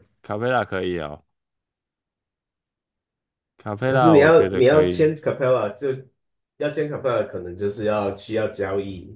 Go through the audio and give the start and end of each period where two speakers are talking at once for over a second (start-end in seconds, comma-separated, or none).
3.9-5.1